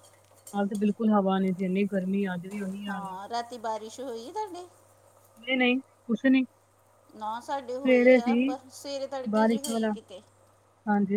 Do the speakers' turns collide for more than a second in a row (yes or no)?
no